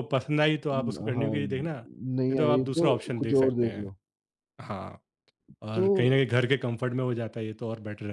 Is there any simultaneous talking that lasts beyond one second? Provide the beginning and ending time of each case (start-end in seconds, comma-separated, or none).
2.2-3.9